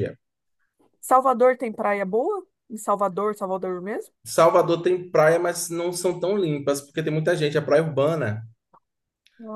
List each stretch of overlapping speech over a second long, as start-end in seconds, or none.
none